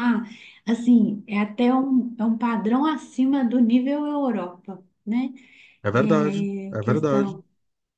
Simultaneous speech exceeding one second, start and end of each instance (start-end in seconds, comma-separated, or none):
5.9-7.4